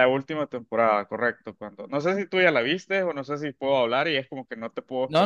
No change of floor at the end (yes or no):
no